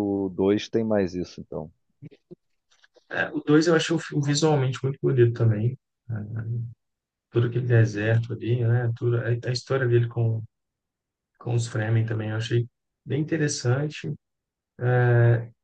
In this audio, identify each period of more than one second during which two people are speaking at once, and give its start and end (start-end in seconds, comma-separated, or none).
none